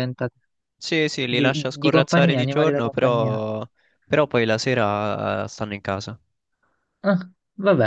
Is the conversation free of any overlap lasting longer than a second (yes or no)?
no